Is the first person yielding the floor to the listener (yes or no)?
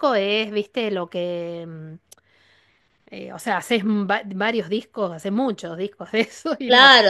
yes